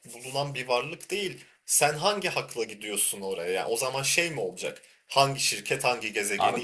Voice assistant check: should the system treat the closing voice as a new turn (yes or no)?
yes